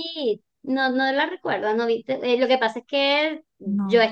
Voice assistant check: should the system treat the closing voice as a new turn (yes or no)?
no